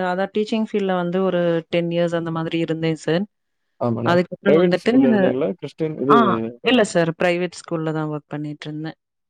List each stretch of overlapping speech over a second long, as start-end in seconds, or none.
4.1-6.1